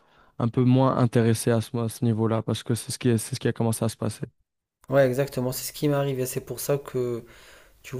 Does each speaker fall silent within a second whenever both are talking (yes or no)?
yes